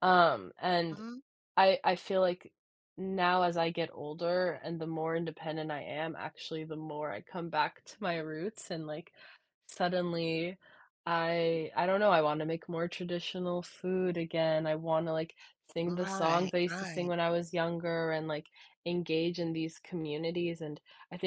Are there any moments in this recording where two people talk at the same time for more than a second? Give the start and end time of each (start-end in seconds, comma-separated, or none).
15.9-17.1